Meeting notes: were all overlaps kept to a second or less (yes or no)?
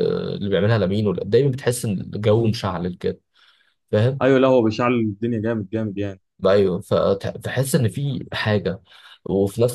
yes